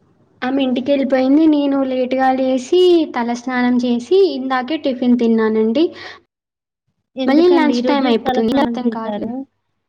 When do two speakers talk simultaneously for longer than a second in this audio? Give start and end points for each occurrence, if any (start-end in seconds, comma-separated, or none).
7.3-9.2